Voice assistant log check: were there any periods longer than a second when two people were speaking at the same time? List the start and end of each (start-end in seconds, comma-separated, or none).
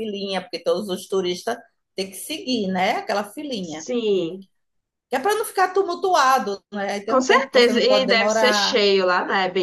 7.1-8.8